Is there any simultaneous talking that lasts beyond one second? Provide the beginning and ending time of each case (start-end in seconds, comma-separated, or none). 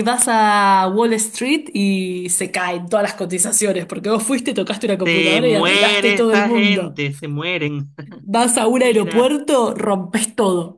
5.0-7.0